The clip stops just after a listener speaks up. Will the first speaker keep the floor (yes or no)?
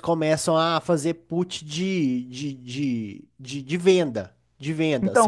no